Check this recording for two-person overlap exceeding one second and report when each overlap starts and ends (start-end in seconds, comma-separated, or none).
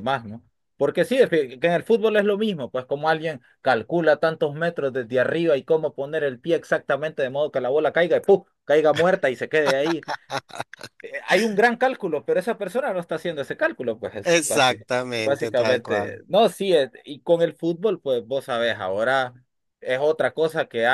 14.2-16.2